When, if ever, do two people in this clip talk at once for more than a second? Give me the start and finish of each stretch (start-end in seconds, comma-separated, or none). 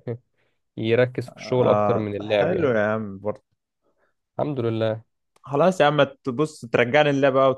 1.6-2.8